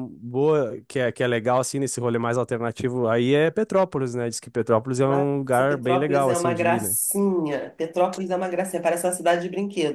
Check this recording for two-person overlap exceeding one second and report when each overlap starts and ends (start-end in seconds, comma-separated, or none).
5.1-7.0